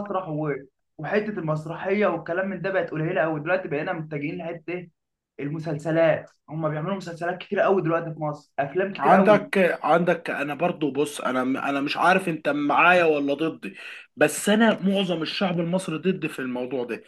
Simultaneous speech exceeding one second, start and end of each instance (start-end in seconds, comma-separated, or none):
none